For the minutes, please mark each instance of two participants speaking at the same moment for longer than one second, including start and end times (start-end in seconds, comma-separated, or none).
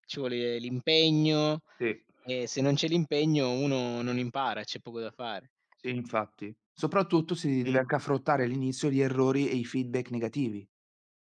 none